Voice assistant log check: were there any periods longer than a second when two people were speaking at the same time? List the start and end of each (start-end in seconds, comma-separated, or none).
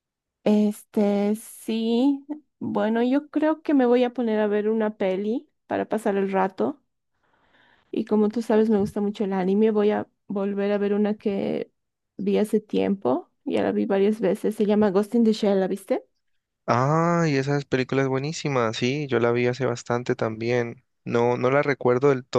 none